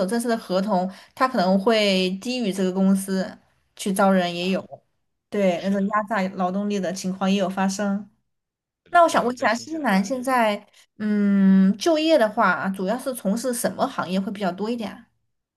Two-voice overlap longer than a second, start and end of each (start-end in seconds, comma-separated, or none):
8.9-10.4